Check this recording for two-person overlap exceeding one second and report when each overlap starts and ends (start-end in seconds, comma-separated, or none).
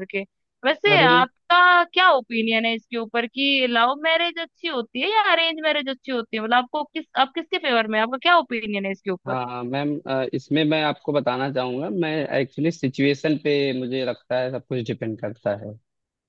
none